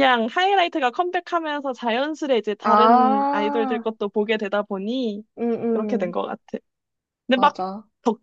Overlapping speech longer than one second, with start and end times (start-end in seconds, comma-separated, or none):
2.6-3.8